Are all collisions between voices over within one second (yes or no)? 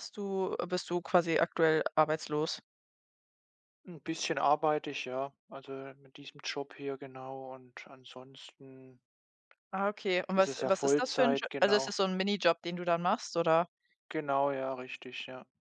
no